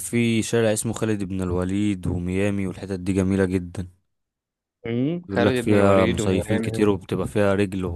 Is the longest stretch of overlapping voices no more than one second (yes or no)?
no